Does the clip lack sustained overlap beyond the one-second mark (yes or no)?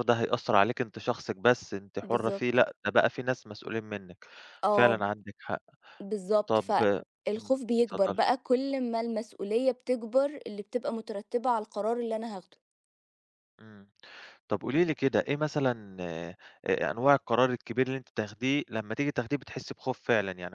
no